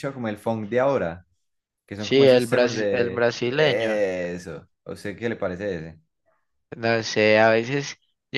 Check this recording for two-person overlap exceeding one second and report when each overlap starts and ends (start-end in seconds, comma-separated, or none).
2.0-4.0